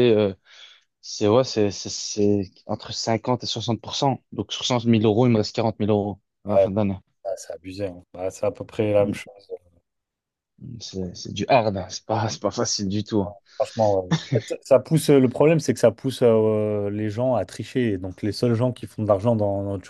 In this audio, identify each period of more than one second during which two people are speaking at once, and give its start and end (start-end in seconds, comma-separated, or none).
none